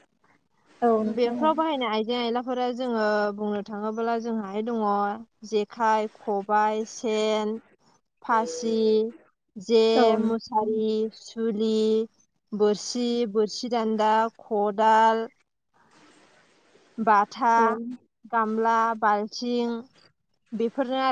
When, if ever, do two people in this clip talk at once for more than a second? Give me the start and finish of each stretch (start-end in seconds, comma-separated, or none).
none